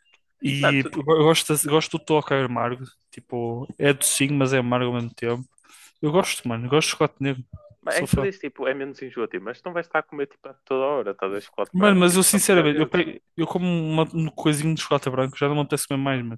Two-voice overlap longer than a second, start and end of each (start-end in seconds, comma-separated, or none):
11.7-13.0